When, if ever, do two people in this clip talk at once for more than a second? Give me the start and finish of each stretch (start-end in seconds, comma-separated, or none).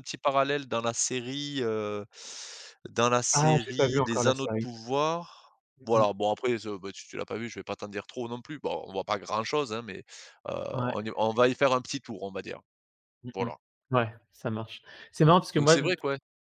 3.3-4.7